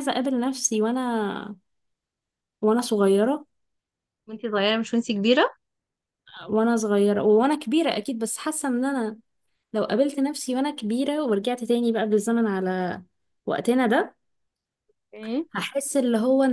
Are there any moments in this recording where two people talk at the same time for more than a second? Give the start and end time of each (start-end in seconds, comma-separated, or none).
none